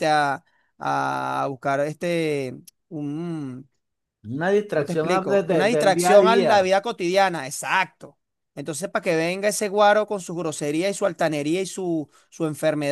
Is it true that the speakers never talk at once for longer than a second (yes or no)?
no